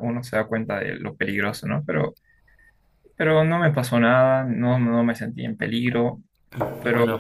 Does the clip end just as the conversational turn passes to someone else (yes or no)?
no